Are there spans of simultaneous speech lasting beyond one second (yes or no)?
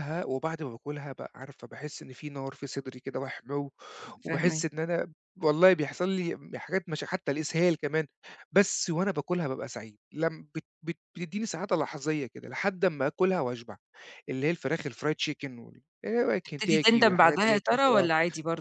yes